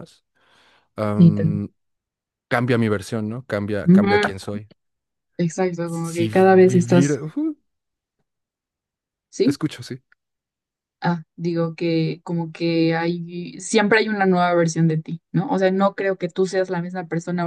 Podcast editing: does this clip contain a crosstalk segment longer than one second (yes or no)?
yes